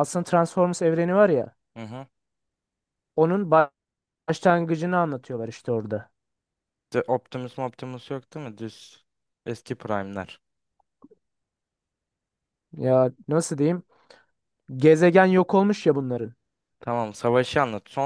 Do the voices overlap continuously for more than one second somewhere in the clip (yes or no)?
no